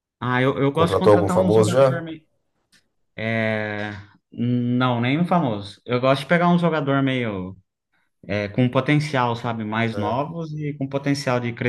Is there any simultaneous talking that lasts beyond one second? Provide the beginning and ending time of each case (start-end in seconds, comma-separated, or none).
0.7-2.0